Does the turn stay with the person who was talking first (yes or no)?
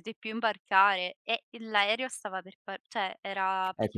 no